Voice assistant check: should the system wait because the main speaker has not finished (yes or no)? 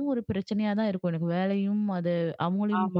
no